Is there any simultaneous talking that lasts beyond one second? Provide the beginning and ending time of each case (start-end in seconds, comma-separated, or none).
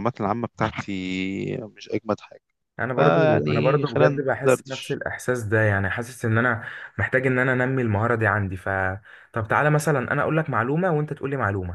3.0-5.0